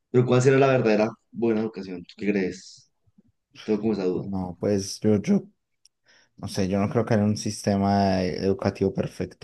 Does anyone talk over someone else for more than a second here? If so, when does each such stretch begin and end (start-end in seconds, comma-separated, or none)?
none